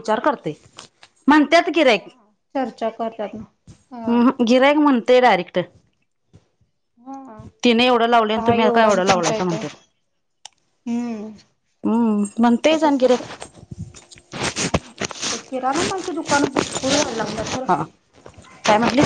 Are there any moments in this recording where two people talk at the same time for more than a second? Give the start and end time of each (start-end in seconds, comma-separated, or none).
8.0-9.6